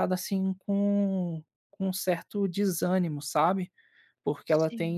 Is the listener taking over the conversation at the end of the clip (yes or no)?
no